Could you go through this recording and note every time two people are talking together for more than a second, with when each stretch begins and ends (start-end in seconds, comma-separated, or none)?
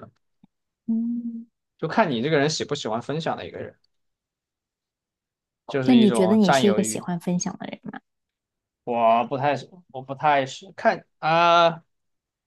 5.8-7.1